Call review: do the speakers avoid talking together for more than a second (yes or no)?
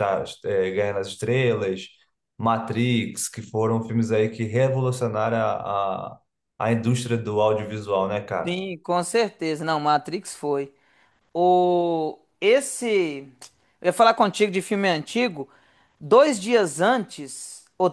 yes